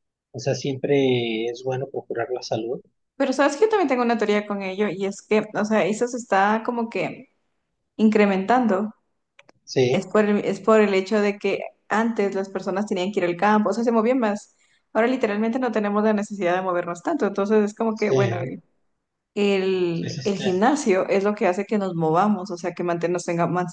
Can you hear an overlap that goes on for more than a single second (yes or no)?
no